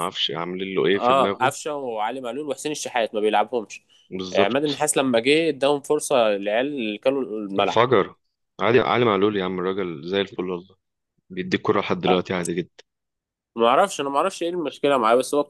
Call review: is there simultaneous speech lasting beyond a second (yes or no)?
no